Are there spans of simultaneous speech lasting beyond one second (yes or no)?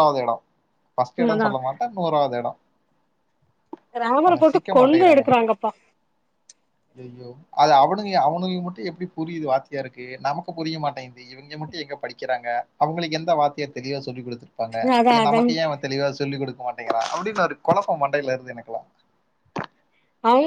no